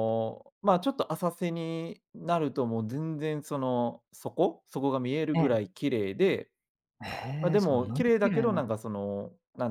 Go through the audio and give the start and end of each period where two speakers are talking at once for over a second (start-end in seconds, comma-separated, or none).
7.4-8.6